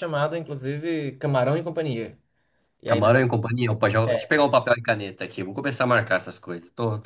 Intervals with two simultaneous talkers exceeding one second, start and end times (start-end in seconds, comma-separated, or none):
none